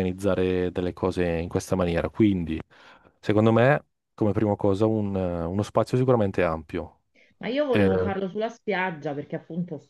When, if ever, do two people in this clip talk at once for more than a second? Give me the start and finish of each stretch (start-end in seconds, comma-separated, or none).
none